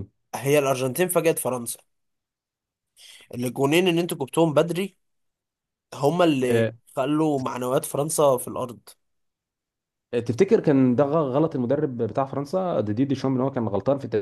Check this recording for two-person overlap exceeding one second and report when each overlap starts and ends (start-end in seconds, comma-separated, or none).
none